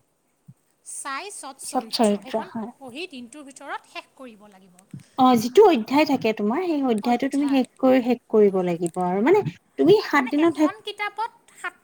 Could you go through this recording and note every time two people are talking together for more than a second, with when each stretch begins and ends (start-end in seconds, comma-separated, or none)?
none